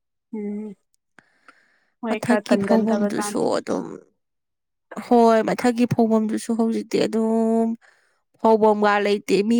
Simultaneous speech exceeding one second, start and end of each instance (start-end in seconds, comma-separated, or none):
2.1-3.4